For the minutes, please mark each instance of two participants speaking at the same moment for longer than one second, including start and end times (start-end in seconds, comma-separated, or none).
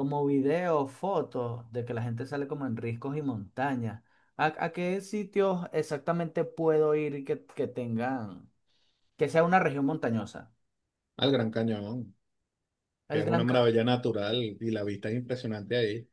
none